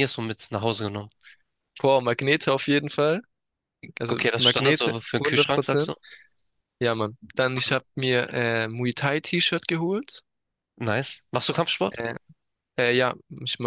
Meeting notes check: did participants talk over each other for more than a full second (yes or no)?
yes